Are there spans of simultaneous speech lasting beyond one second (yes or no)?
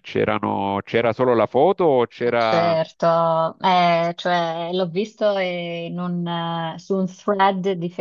no